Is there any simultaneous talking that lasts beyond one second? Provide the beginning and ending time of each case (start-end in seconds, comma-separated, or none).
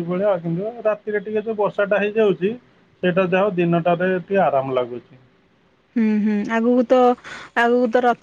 none